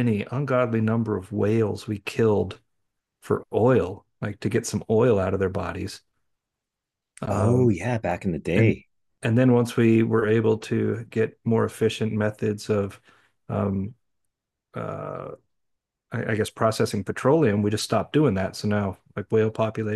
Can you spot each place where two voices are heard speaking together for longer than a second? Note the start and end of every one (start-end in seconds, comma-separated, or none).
none